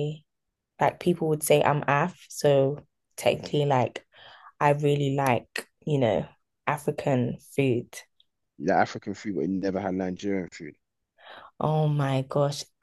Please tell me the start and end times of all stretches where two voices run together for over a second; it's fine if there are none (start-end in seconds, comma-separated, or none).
none